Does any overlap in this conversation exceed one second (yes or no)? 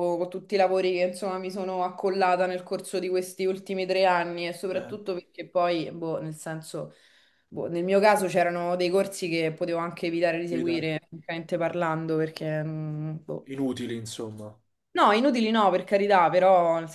no